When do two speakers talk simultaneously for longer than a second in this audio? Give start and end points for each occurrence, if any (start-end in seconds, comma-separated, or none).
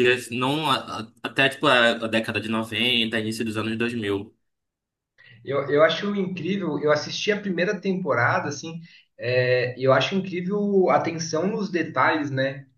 none